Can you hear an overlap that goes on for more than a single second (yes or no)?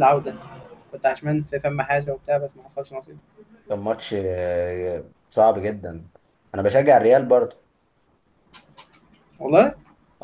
no